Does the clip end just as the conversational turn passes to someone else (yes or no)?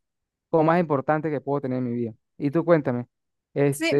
yes